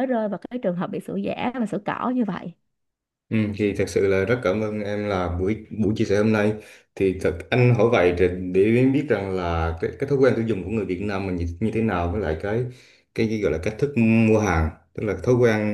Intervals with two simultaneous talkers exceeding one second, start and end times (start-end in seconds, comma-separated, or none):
none